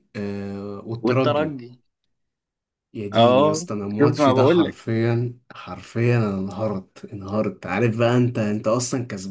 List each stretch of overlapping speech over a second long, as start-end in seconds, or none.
3.1-4.8